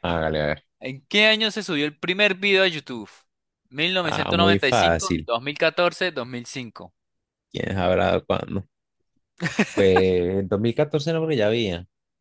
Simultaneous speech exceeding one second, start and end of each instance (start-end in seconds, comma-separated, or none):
4.0-5.3